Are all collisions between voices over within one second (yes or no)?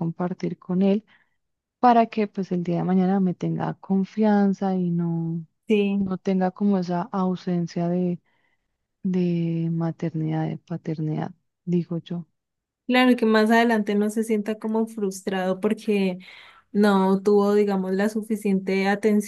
yes